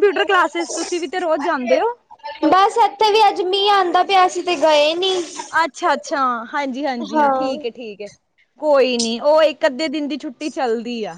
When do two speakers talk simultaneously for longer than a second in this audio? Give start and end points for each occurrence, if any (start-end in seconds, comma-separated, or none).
none